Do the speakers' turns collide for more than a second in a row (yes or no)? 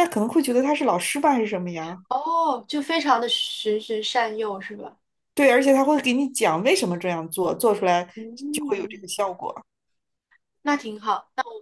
no